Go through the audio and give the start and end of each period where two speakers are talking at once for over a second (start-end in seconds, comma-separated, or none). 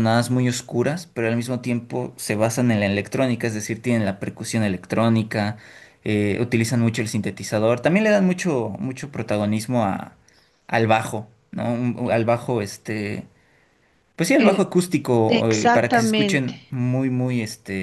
15.3-16.6